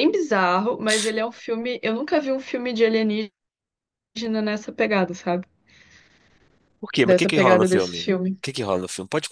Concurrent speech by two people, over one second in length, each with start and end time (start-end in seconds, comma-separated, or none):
7.0-8.4